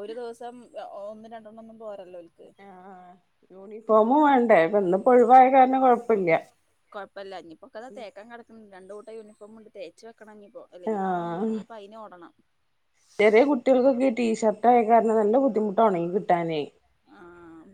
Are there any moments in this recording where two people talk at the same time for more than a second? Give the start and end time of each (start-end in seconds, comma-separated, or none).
none